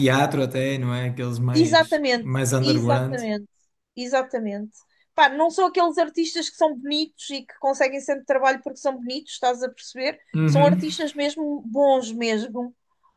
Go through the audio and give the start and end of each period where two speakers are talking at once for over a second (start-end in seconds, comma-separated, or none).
1.5-3.2